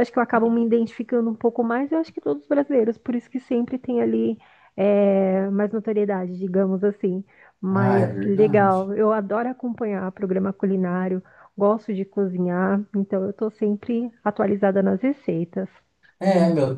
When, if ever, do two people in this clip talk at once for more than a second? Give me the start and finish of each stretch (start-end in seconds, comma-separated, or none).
7.7-8.9